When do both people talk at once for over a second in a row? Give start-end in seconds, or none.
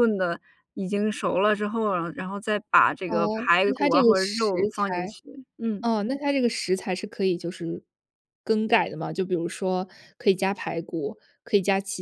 3.1-5.2